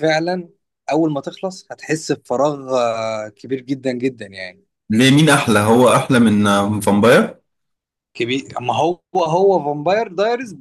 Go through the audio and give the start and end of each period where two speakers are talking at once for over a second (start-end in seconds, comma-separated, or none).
none